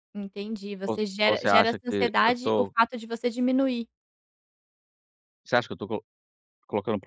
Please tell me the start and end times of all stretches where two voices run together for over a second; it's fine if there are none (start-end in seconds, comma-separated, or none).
0.9-2.7